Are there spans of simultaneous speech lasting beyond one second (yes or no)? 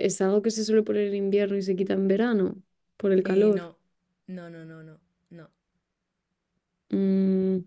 no